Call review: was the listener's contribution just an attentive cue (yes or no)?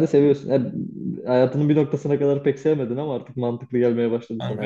no